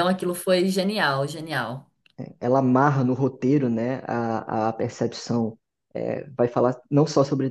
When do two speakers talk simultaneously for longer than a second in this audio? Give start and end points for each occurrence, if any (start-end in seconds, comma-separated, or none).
none